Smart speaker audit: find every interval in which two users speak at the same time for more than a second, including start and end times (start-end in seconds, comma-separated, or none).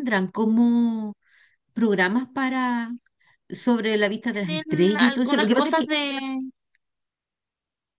4.4-5.9